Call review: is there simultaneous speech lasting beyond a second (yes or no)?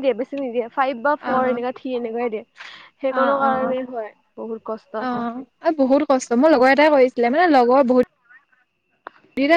no